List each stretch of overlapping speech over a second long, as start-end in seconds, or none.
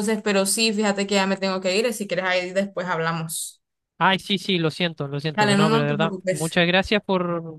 5.3-6.6